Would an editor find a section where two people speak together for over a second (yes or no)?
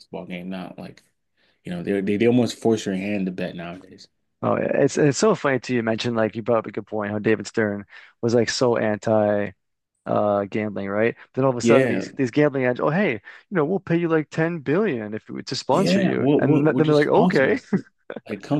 yes